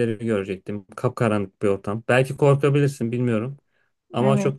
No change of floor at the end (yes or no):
yes